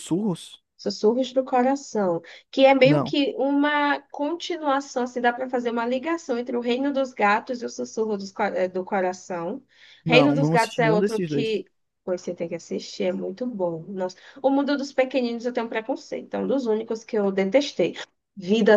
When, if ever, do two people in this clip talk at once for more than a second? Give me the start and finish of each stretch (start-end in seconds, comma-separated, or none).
10.1-11.5